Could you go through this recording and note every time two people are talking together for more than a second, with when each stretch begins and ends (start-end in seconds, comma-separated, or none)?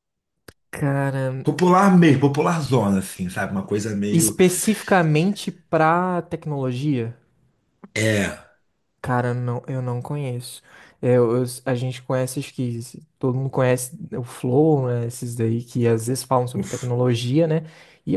none